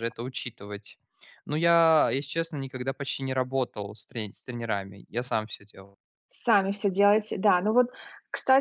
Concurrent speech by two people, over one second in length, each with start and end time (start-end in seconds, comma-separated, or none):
none